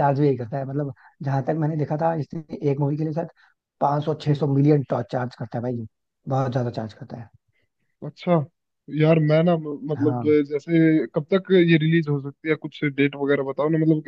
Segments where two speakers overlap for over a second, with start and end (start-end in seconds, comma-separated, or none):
none